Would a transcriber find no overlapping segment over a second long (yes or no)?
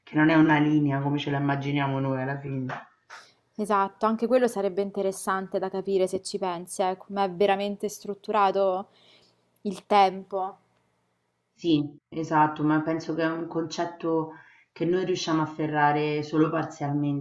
yes